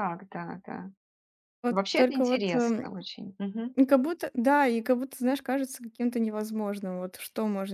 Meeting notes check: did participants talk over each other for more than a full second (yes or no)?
yes